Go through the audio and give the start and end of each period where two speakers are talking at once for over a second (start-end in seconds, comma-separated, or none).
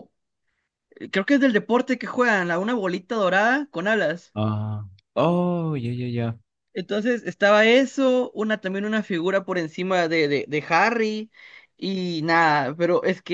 none